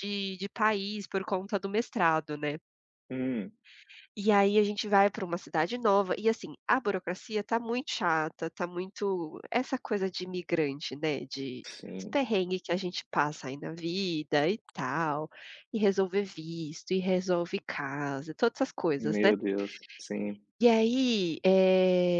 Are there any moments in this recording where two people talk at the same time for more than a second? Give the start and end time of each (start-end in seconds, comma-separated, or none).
none